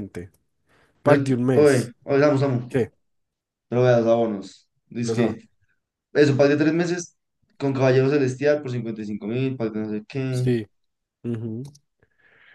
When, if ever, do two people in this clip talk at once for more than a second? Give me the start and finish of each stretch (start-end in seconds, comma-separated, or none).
none